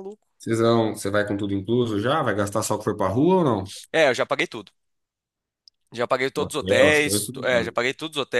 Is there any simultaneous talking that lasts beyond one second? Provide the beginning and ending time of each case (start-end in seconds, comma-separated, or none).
6.3-7.8